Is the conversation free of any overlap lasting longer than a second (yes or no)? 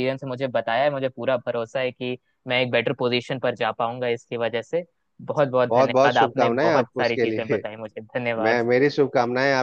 no